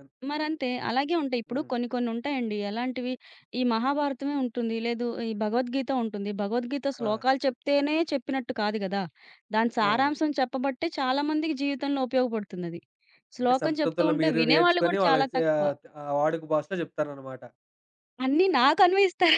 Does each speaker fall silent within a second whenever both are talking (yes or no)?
no